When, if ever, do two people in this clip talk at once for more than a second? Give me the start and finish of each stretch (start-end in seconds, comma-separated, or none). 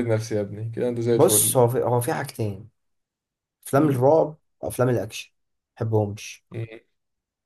none